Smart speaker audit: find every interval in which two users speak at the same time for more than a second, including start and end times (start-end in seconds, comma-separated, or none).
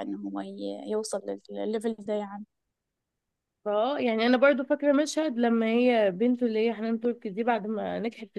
none